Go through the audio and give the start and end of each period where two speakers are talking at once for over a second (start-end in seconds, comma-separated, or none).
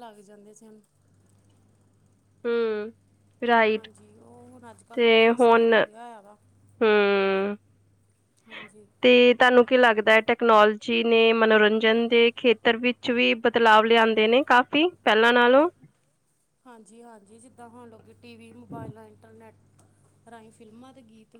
none